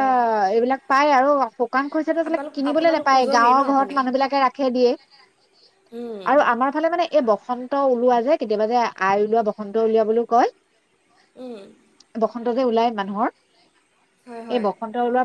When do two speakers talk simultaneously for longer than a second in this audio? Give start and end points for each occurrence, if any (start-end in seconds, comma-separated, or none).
2.2-4.0